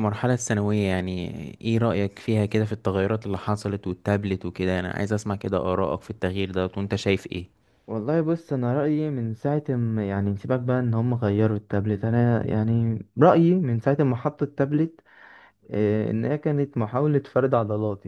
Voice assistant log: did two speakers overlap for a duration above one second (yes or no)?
no